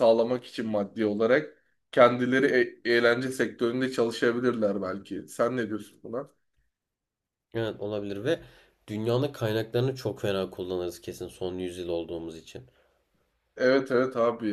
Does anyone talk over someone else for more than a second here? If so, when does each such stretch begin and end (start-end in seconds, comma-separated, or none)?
none